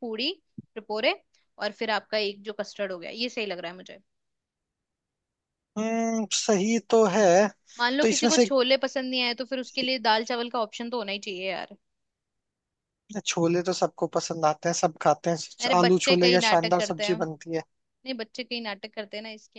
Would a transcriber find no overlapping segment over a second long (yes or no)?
no